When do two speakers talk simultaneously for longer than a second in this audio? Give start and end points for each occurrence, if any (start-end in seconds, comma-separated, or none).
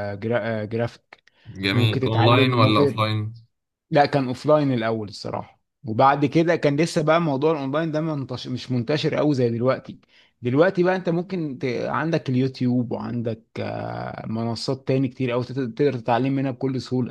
1.7-3.0